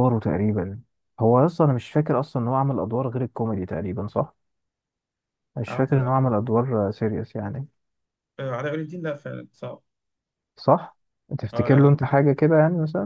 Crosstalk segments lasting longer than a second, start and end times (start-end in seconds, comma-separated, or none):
none